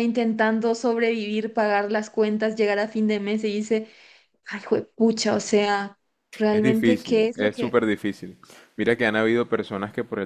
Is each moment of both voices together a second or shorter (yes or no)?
no